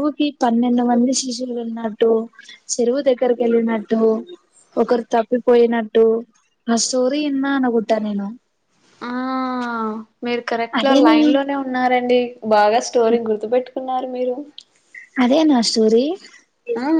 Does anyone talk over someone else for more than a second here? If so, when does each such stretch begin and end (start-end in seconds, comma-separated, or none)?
none